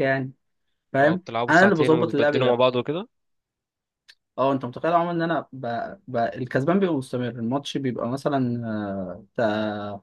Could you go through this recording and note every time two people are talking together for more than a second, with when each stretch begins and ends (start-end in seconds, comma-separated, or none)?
1.0-2.6